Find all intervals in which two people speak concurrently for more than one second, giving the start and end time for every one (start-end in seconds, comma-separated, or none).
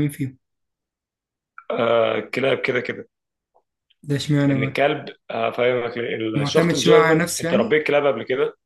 6.3-7.8